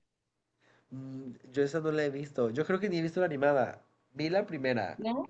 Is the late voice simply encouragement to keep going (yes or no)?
yes